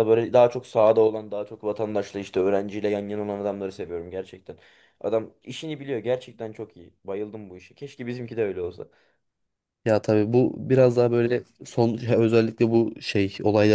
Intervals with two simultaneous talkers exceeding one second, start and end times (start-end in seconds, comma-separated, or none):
none